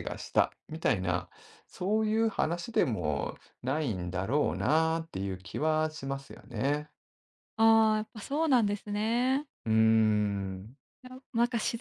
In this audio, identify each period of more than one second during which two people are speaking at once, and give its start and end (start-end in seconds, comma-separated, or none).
none